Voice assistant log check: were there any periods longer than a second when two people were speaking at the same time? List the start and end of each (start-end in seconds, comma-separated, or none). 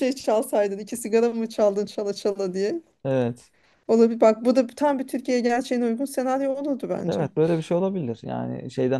none